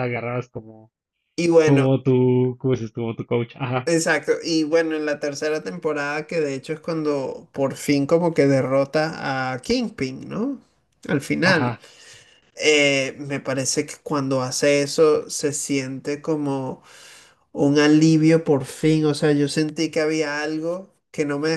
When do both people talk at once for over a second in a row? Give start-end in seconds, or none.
none